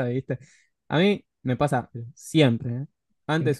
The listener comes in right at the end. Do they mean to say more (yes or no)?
no